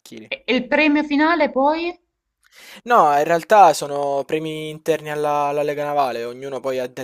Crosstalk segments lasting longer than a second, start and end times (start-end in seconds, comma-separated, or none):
none